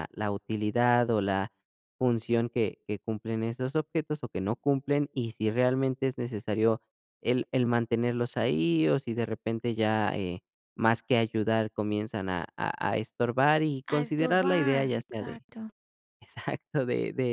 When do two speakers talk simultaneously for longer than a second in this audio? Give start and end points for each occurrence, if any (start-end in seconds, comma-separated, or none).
13.9-15.4